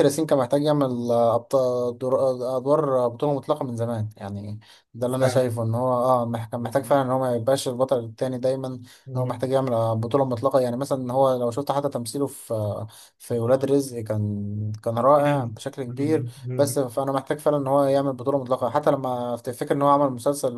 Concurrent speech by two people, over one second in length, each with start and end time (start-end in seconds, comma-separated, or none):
15.2-16.8